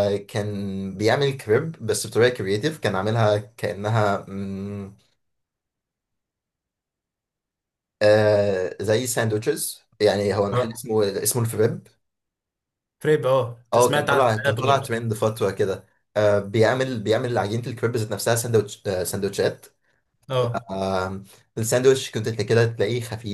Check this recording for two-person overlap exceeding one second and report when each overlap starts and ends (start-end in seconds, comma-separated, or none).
13.7-14.9